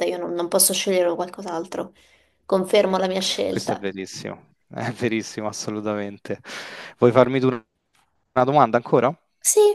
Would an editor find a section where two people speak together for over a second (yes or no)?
no